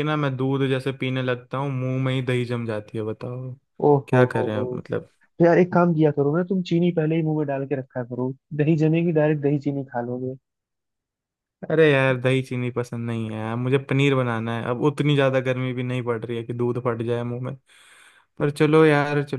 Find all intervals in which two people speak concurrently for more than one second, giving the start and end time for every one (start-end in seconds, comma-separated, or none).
none